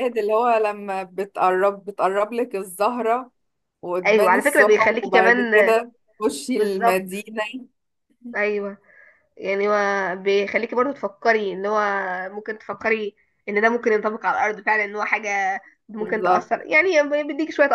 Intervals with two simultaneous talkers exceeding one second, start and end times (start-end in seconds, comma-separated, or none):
4.0-5.5